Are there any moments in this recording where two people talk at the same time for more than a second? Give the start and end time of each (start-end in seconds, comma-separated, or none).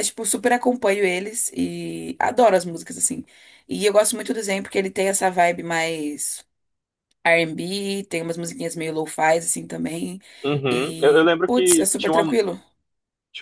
10.7-12.4